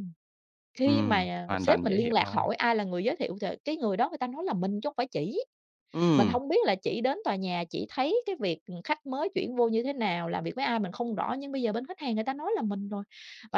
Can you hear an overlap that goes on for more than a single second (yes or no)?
yes